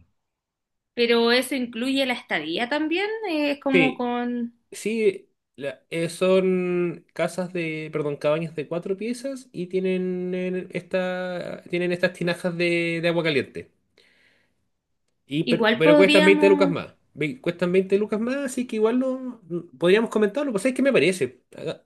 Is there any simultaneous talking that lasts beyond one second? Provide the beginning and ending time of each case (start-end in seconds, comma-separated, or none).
15.5-16.8